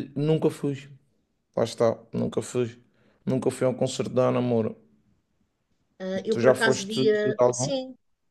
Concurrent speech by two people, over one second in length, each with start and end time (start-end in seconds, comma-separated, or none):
6.3-7.7